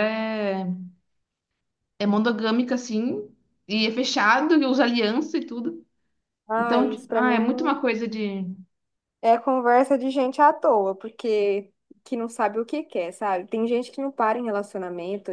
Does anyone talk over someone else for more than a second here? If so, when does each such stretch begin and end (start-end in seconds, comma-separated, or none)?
6.6-7.8